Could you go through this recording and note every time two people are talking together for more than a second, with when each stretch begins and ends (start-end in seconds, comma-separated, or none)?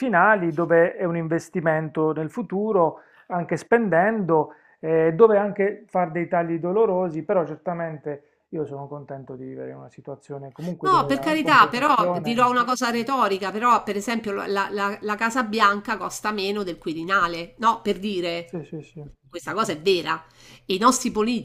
10.8-12.4